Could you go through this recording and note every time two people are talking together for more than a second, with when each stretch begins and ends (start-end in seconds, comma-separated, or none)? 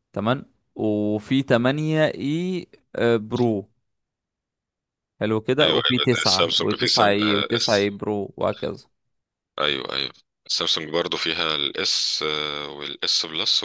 5.6-7.9